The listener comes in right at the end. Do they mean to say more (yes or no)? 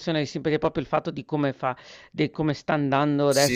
yes